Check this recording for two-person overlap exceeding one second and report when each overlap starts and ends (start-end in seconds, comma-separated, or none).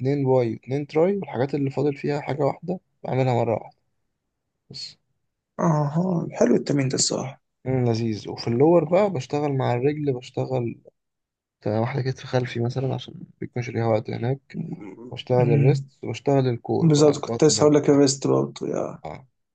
16.8-18.0